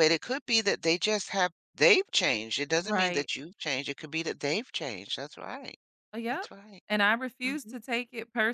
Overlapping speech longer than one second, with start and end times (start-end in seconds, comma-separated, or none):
none